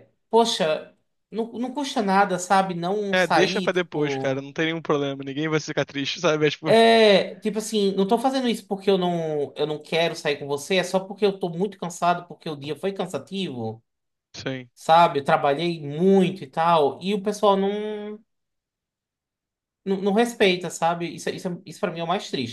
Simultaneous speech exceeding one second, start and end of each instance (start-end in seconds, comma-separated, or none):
3.1-4.4